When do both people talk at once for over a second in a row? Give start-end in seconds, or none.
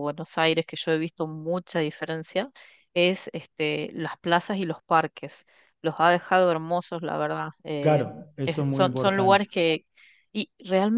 7.8-9.4